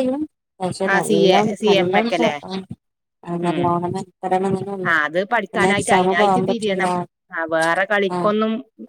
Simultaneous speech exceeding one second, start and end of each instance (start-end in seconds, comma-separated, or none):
5.5-6.9